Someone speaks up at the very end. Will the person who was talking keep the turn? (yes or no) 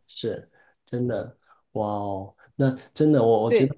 yes